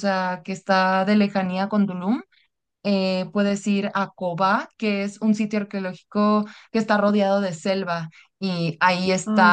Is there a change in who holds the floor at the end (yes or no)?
no